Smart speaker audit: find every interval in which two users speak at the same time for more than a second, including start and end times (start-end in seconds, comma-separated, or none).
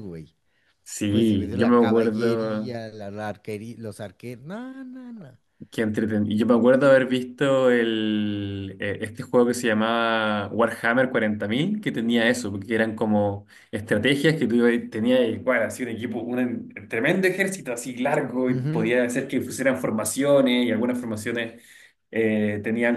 1.1-2.8